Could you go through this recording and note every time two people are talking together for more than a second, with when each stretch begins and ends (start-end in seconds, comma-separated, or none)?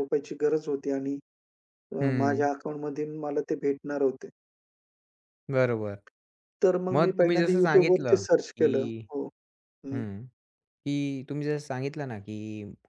6.9-8.7